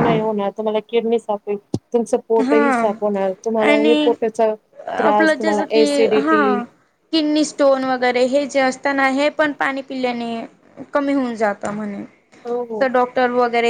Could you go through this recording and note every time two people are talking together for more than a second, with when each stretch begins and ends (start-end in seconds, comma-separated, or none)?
5.0-6.6